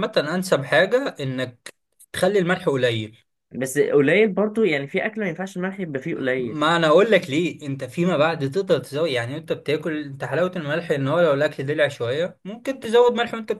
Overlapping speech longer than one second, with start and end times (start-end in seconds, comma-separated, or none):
none